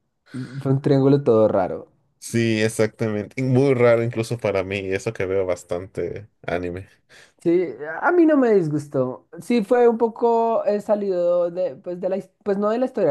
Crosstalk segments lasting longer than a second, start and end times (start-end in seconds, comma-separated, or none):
none